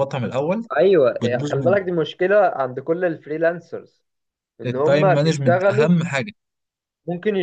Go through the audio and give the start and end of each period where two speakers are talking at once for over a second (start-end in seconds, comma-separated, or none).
4.7-5.9